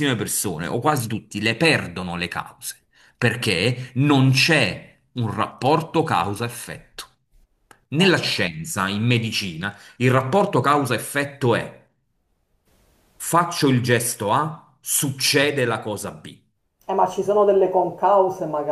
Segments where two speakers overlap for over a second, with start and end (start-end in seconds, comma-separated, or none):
none